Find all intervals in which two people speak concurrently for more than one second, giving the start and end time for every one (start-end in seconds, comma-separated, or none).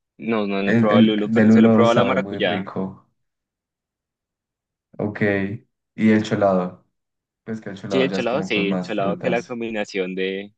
0.6-2.7, 7.9-9.6